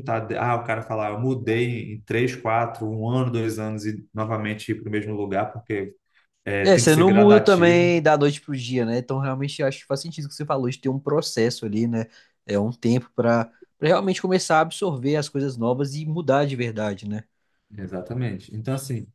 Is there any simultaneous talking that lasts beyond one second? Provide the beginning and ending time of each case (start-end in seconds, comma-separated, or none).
6.7-7.9